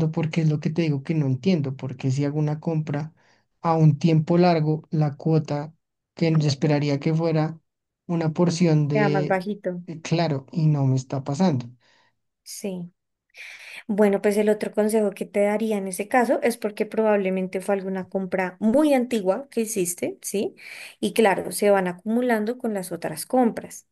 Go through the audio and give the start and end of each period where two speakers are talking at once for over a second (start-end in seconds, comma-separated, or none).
none